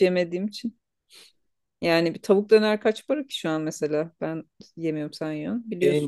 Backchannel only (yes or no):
no